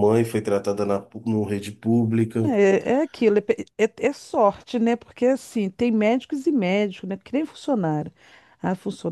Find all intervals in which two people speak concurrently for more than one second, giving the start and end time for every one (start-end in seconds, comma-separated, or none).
none